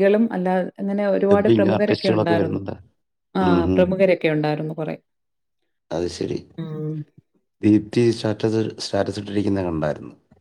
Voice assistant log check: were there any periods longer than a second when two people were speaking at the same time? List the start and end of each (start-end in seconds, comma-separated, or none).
1.3-2.6